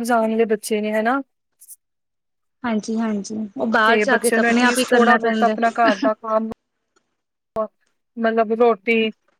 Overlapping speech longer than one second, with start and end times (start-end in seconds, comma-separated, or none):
4.1-5.5